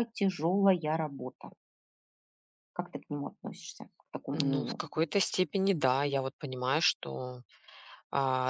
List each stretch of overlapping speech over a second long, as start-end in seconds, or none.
none